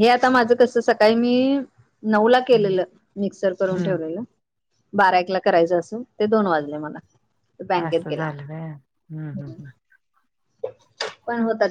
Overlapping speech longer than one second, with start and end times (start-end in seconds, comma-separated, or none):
7.9-9.5